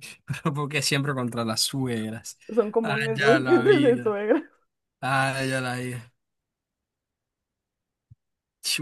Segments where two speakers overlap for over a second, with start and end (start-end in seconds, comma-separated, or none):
2.8-4.1